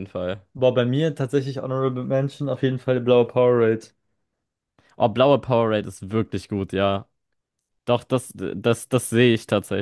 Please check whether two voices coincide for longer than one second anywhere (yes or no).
no